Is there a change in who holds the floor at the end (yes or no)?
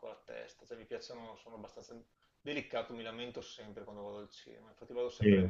no